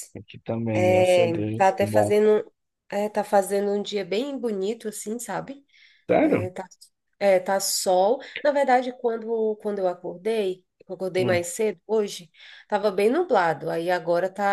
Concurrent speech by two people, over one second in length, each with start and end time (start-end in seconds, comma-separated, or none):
0.7-2.2